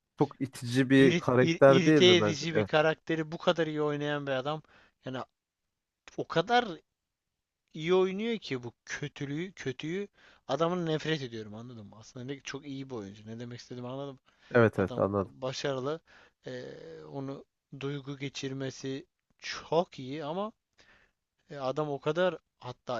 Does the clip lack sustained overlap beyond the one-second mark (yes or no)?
no